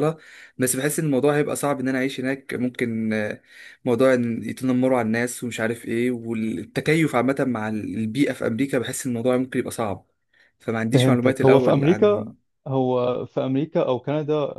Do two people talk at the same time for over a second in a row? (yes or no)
yes